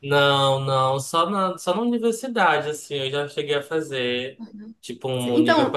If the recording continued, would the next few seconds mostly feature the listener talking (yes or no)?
yes